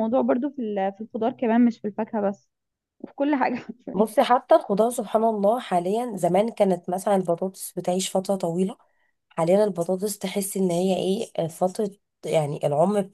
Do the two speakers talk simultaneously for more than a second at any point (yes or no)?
no